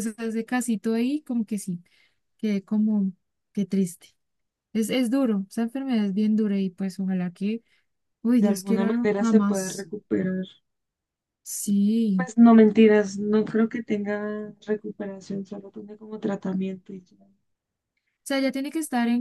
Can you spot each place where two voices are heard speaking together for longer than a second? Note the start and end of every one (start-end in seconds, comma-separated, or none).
8.4-9.9